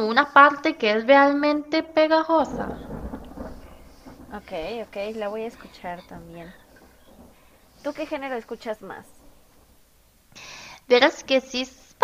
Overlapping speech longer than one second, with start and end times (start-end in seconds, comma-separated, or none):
none